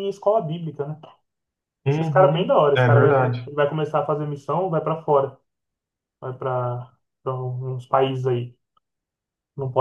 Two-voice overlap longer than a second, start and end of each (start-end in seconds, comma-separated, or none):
1.9-3.5